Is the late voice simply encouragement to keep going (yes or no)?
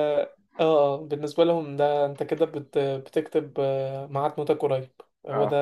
yes